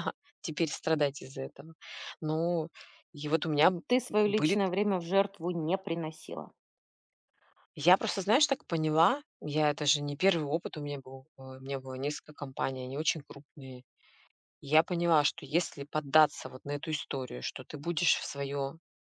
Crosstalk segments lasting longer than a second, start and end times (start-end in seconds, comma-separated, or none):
none